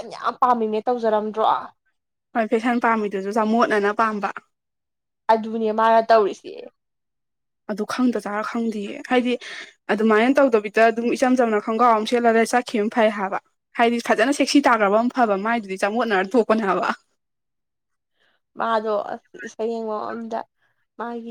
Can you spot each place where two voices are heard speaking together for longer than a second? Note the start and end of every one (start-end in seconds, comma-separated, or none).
none